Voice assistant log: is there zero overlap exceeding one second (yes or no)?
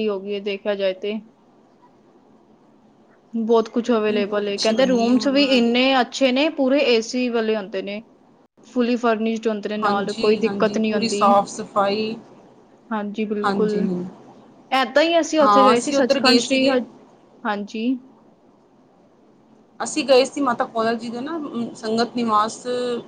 no